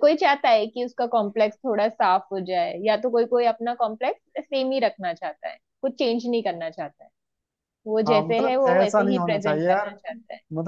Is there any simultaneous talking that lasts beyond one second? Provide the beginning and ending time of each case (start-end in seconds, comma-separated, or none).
8.1-9.9